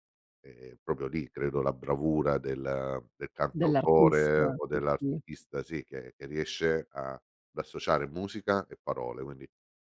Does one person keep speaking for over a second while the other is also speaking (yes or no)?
yes